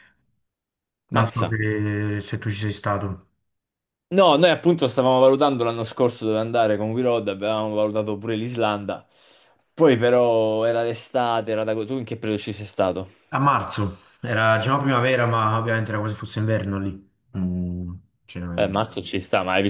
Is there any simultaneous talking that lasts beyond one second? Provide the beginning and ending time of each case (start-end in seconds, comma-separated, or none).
none